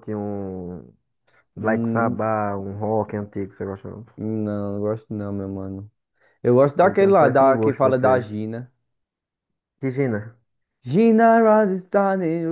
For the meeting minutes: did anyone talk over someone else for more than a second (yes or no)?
yes